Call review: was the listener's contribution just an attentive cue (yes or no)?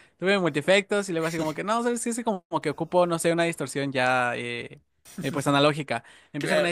yes